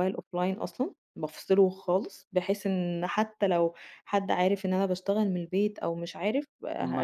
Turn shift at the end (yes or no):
no